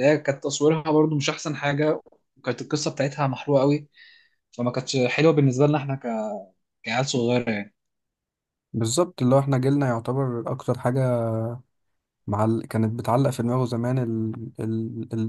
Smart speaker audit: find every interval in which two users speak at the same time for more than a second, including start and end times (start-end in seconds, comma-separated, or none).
none